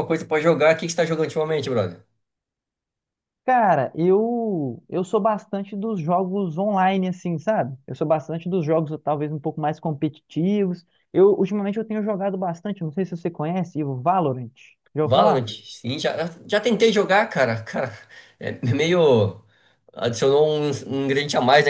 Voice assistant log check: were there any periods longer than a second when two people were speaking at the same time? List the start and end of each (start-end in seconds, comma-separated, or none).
none